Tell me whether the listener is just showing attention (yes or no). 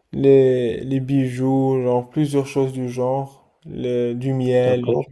no